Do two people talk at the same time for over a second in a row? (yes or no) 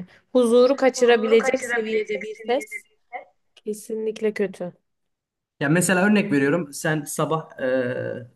yes